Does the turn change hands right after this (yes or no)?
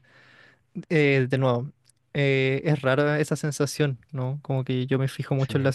no